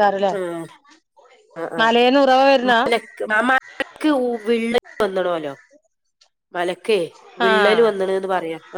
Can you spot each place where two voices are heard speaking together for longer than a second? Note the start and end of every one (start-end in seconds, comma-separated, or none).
none